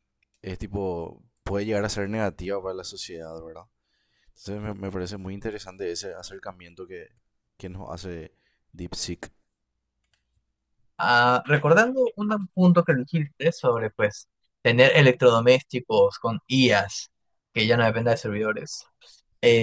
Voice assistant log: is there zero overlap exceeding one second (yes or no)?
yes